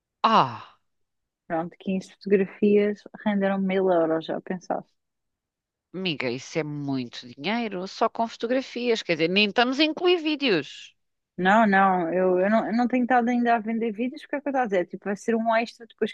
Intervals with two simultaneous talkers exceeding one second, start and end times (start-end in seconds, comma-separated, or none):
none